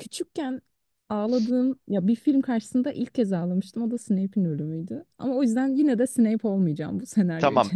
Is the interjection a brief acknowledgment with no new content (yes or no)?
no